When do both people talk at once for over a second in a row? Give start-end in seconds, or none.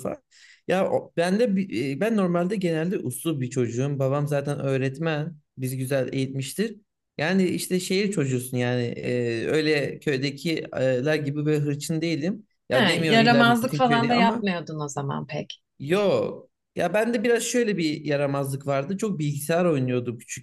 12.7-14.5